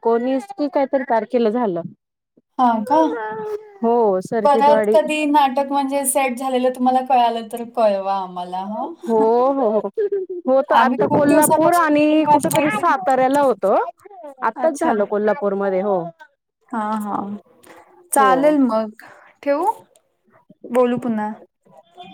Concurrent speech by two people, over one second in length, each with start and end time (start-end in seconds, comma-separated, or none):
10.8-12.9